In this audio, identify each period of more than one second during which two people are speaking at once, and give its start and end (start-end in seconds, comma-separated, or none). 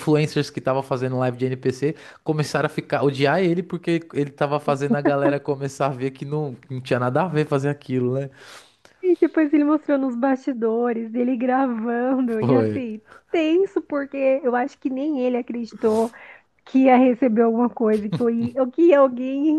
none